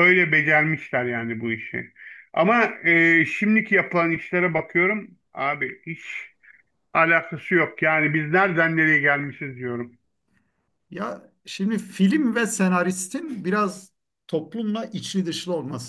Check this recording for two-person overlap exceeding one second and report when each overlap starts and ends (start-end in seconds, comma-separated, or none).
none